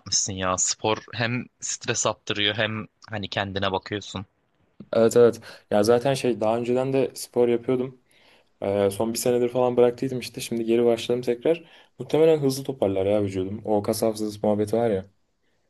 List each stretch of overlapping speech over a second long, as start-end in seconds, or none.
none